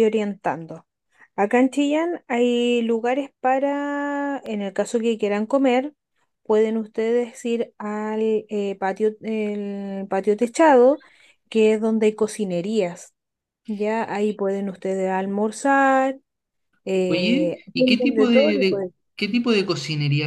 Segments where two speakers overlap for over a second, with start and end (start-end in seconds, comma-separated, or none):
17.1-18.9